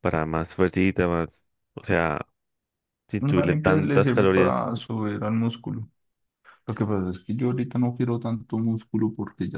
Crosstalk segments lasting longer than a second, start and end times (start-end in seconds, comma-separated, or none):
3.3-4.6